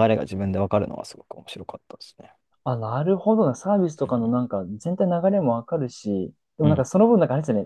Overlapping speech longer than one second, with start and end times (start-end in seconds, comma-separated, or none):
none